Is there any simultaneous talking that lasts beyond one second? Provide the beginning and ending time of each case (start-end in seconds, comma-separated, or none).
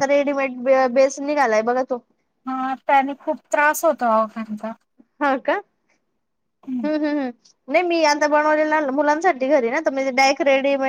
none